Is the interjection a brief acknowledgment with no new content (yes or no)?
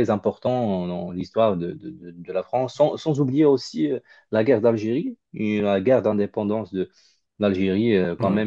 yes